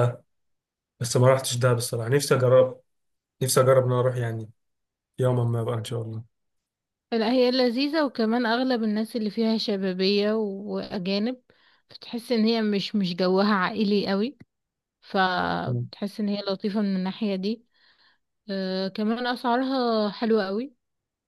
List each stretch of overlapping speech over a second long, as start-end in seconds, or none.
none